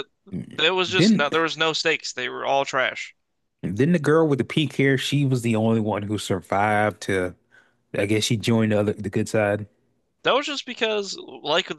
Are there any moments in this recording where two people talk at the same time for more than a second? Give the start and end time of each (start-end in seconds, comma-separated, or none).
none